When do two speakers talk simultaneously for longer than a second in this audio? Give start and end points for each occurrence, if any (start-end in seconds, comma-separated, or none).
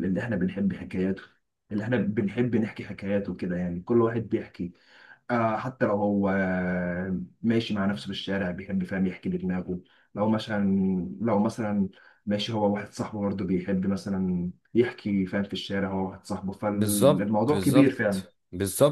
16.7-18.2